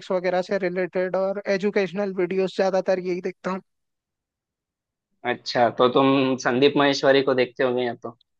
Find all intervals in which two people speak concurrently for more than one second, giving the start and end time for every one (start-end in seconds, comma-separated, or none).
none